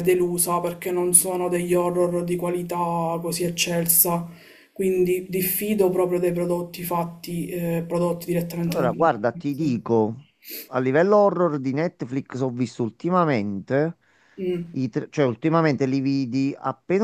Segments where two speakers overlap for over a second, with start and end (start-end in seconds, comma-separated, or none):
8.6-10.0